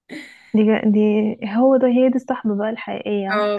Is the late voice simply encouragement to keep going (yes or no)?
no